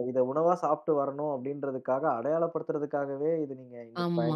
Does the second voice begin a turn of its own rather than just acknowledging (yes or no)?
yes